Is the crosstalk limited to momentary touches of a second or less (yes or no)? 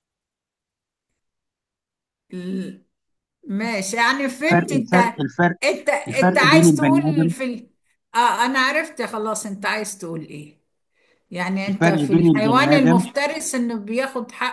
no